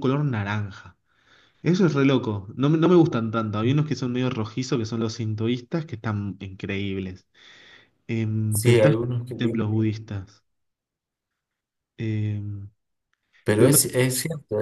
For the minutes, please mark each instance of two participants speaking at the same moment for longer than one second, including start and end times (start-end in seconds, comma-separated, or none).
none